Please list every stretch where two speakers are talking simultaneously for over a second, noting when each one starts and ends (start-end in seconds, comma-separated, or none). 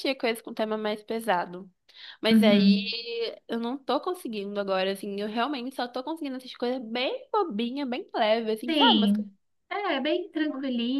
none